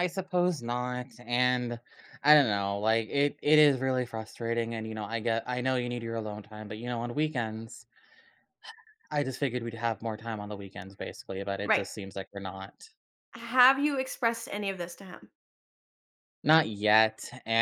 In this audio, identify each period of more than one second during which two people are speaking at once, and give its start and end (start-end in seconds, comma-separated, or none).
none